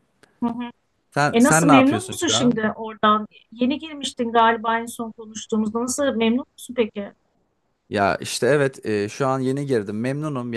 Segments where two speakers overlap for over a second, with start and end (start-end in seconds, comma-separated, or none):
1.3-2.6